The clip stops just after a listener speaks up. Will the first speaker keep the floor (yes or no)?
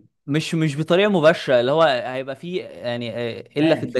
yes